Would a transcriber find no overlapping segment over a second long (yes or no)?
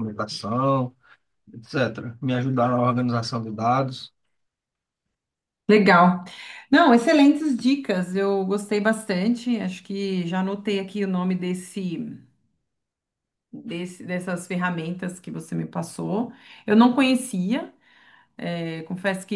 yes